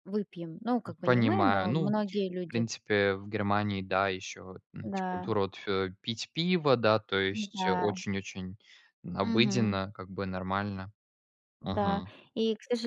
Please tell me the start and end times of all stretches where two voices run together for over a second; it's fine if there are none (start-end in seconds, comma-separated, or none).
1.0-2.7